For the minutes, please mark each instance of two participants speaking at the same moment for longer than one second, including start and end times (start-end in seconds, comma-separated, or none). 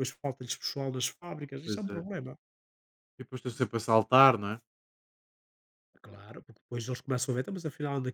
none